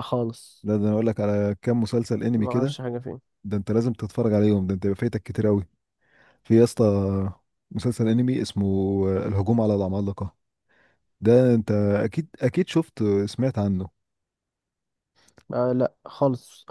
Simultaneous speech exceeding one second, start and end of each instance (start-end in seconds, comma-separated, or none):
none